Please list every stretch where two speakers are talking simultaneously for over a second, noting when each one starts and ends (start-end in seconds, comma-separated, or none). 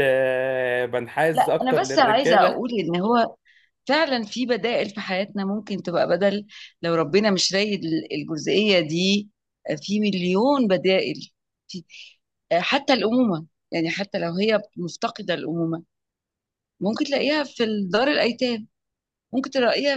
1.3-2.6